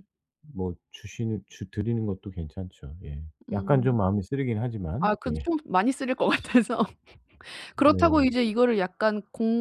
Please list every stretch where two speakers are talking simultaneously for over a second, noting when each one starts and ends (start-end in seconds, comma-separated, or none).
none